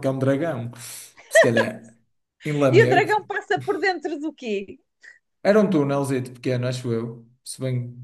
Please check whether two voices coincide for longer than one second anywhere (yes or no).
no